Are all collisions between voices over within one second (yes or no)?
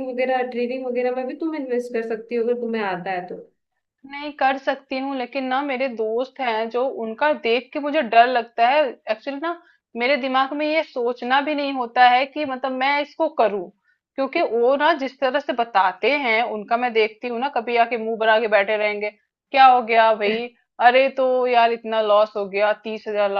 yes